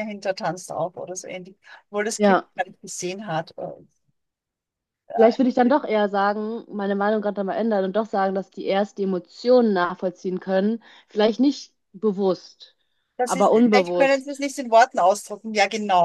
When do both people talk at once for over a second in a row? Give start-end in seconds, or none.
13.2-14.4